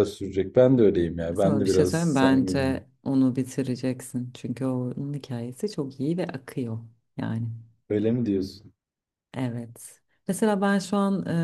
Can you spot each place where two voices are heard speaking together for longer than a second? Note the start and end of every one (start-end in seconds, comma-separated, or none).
1.4-2.6